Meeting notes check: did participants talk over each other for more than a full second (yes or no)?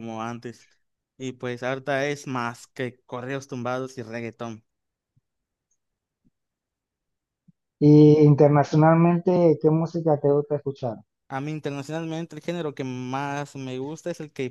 no